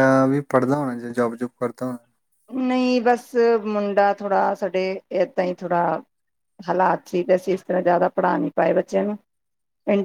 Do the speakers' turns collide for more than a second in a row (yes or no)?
no